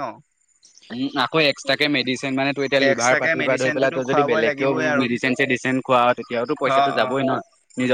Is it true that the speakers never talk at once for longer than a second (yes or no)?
no